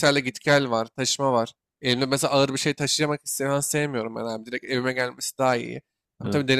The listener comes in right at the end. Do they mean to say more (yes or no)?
no